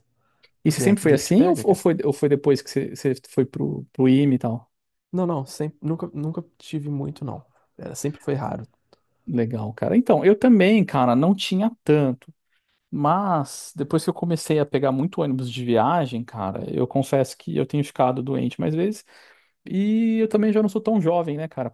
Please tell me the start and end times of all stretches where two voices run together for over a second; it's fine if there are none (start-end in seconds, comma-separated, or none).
0.7-1.9